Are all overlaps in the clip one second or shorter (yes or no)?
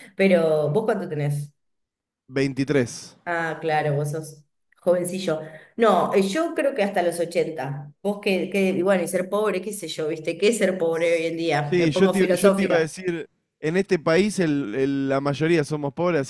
no